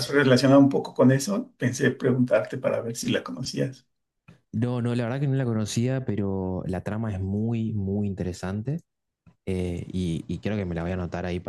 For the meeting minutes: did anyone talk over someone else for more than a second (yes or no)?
no